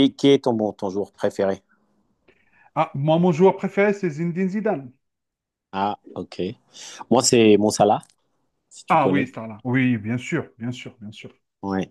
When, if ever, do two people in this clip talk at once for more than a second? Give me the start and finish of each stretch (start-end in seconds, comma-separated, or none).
none